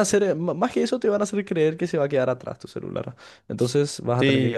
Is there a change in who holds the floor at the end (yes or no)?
yes